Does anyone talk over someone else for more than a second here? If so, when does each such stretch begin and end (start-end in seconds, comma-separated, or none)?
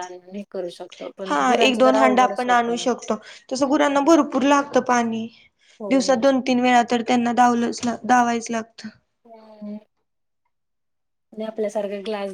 1.3-2.8